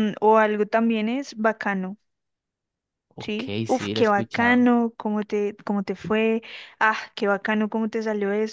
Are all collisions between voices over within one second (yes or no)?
no